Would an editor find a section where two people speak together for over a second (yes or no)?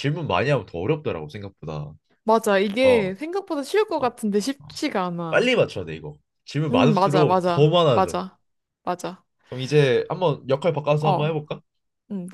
yes